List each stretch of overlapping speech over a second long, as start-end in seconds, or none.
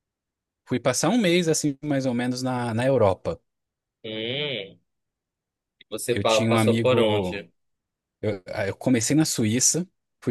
6.1-7.5